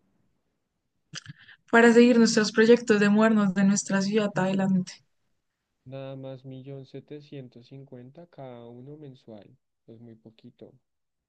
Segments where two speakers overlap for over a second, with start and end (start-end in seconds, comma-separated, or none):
none